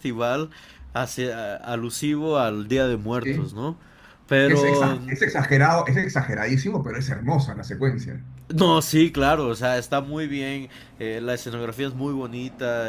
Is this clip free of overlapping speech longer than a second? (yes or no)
yes